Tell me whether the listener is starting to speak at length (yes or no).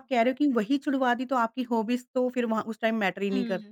yes